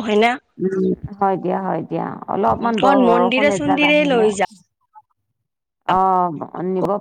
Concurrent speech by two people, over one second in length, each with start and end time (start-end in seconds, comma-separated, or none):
2.8-4.3